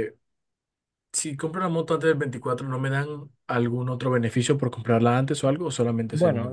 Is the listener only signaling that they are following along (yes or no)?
no